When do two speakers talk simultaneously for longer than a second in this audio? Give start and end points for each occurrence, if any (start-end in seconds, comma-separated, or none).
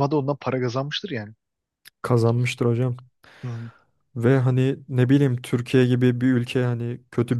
none